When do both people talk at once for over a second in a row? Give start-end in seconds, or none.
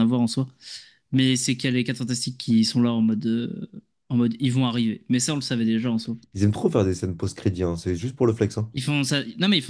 none